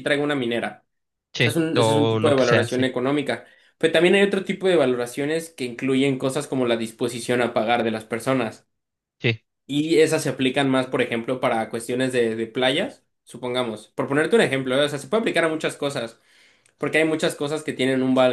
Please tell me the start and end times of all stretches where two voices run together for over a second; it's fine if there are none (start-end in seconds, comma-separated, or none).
1.4-2.9